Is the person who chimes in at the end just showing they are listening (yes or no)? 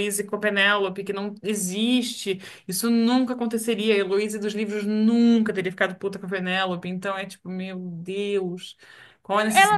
no